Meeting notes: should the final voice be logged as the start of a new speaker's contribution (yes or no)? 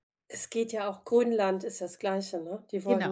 no